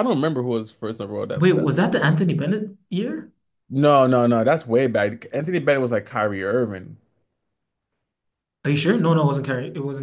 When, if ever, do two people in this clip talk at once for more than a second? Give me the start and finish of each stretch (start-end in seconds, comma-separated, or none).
none